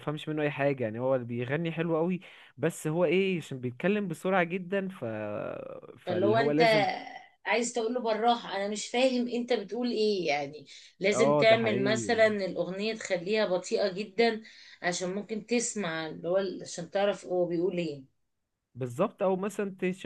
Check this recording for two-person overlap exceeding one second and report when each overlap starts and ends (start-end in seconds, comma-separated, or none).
11.1-12.3